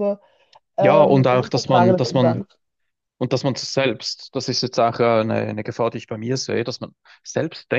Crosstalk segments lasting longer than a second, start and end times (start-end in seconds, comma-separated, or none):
0.8-2.5